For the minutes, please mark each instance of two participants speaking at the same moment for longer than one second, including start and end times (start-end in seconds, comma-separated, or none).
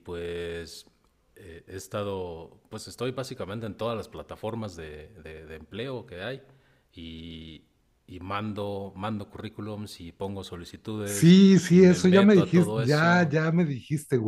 11.0-13.3